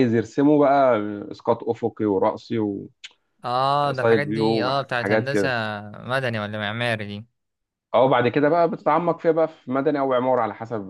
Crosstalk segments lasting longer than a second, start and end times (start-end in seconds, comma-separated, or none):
3.9-5.5